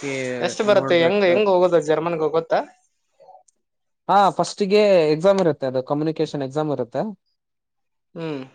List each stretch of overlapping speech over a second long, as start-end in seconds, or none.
none